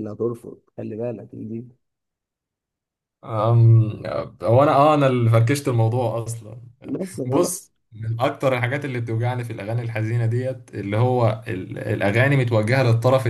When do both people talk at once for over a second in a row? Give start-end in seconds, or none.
none